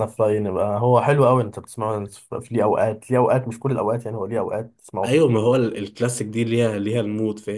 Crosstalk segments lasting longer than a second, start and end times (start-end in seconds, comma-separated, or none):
none